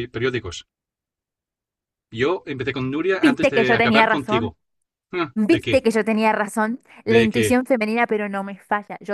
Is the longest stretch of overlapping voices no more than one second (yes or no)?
no